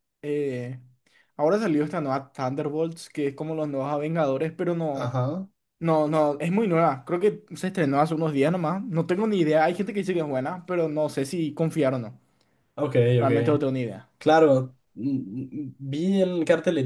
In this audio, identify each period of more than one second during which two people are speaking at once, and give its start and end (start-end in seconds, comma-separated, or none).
none